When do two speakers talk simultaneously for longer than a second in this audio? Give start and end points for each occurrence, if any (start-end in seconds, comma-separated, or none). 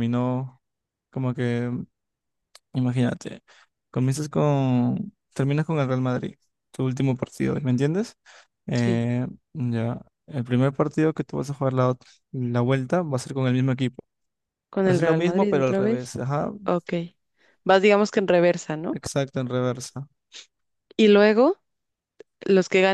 14.9-16.1